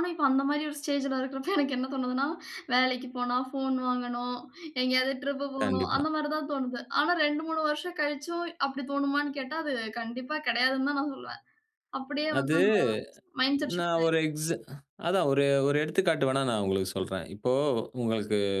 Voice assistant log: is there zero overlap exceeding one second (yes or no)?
yes